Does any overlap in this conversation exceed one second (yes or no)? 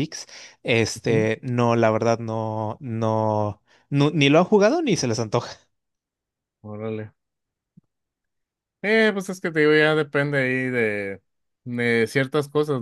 no